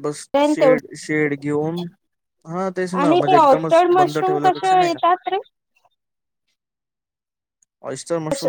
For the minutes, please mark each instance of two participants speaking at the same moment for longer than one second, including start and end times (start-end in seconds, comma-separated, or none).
3.0-5.0